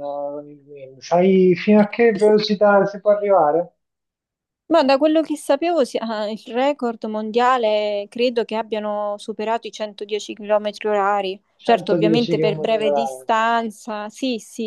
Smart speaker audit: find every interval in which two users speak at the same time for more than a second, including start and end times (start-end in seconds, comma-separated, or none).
11.6-13.3